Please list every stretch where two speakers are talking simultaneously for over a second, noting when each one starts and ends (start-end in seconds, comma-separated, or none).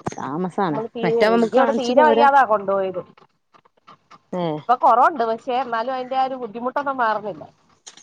0.7-2.2